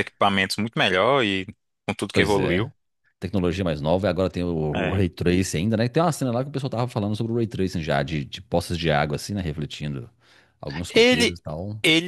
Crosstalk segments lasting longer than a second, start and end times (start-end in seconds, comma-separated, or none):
none